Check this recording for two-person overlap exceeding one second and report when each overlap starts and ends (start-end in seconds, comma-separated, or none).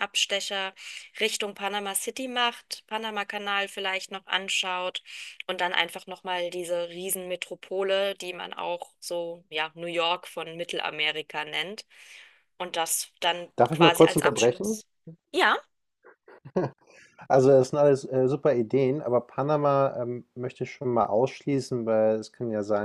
13.6-14.8